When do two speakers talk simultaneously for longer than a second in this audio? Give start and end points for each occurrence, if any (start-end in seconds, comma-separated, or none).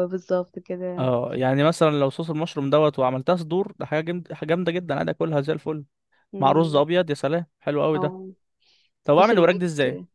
none